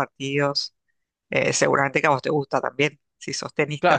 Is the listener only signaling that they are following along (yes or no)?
no